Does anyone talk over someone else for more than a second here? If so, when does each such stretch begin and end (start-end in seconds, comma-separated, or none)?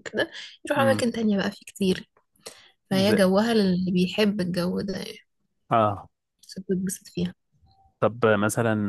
none